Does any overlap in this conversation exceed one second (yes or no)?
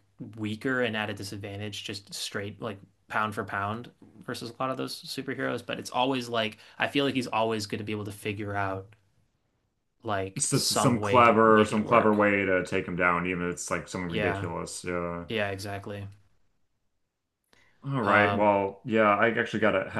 yes